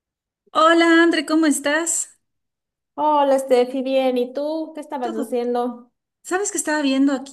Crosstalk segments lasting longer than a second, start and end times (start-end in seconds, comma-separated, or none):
none